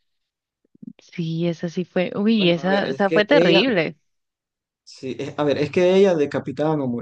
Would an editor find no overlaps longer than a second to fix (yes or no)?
no